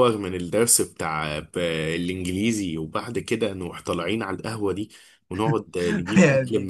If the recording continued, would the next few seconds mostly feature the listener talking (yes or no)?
no